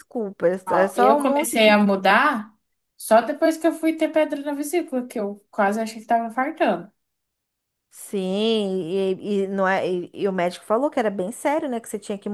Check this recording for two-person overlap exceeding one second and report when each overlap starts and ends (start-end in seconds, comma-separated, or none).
0.7-2.1